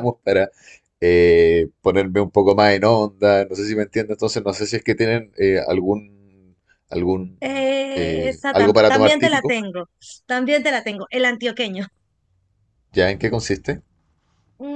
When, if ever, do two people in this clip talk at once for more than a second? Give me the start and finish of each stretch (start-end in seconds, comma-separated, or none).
7.4-9.6